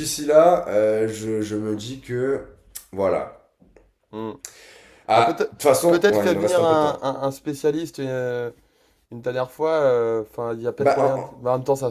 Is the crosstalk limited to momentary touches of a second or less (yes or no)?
no